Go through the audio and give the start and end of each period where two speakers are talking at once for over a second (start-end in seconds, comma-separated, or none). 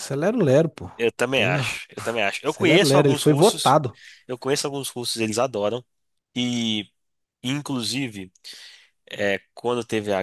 2.4-3.8